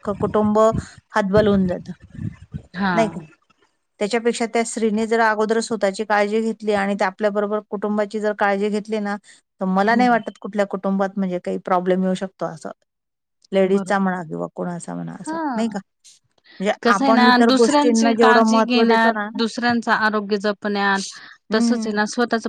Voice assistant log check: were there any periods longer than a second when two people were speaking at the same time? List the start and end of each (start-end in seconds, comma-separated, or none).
16.8-19.3